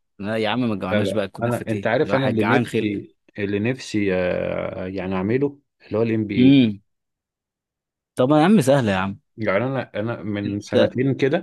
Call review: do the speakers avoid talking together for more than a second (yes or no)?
no